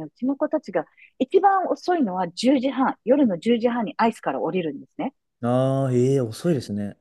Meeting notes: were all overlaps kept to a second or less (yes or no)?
yes